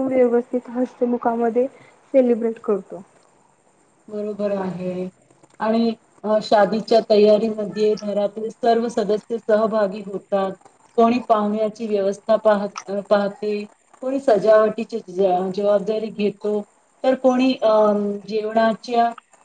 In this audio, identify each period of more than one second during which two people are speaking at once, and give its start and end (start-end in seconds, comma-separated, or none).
none